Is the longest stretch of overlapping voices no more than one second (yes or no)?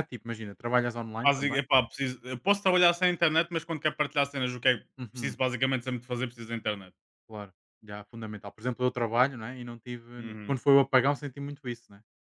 yes